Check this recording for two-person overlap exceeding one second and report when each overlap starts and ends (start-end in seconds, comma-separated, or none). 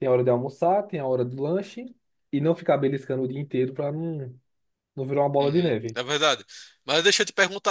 none